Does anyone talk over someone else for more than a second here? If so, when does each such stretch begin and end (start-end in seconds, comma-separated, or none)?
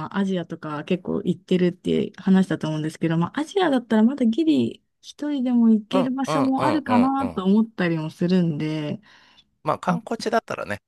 5.9-7.5